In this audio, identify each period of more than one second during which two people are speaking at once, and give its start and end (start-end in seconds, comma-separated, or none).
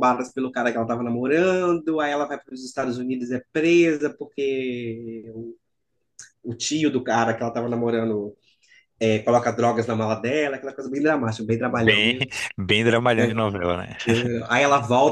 none